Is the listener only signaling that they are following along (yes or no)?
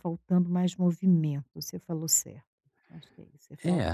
no